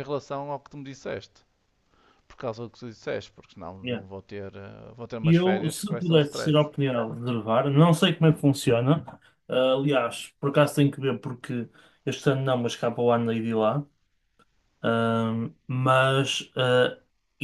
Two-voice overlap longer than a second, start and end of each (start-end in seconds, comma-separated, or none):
5.2-6.7